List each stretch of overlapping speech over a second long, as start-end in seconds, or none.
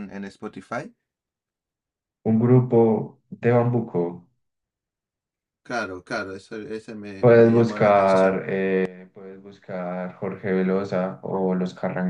7.2-8.4